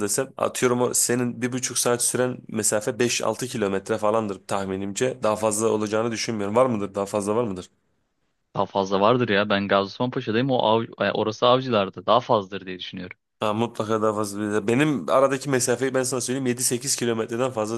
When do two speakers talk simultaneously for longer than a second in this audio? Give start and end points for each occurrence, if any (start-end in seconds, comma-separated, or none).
none